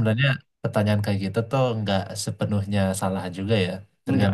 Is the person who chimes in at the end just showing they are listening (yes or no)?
no